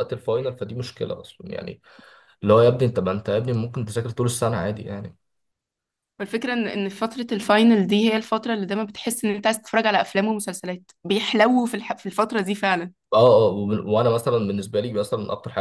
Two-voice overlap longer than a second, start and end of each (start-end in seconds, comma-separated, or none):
none